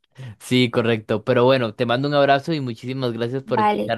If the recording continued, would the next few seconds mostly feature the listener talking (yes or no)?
yes